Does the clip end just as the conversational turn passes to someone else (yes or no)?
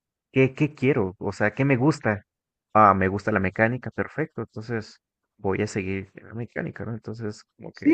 yes